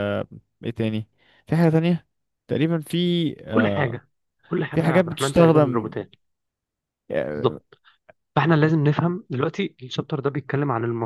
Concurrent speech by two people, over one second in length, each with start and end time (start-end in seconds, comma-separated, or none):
4.7-5.9